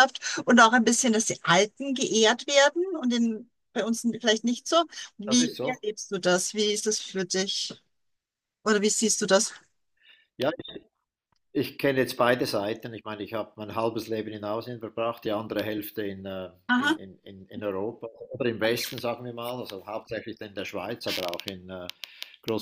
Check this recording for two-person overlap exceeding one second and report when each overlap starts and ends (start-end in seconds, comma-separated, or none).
none